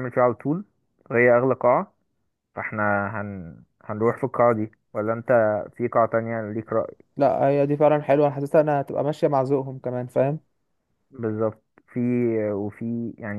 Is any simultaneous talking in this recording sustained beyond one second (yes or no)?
no